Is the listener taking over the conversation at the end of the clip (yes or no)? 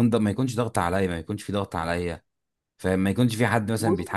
no